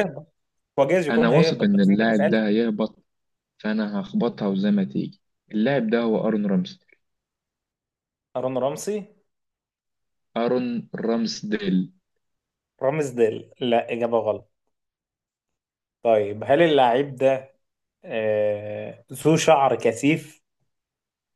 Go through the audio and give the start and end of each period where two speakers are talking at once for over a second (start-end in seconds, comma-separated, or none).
1.1-2.5